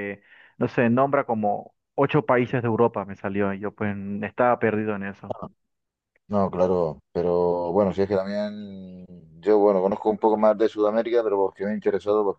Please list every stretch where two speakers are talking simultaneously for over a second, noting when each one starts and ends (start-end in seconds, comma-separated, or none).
none